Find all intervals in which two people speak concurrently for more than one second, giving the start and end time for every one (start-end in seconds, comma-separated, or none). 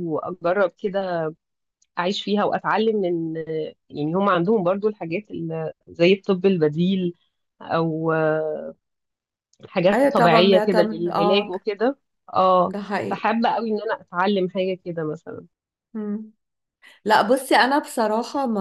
9.9-11.5